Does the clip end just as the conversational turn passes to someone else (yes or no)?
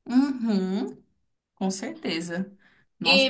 yes